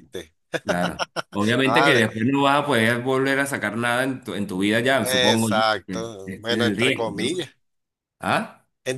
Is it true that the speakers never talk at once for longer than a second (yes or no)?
no